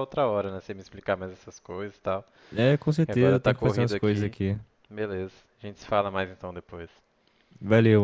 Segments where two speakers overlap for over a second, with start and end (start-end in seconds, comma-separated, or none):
3.1-4.3